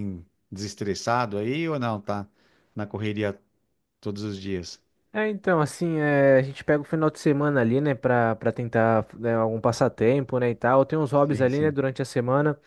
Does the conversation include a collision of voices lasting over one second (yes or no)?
no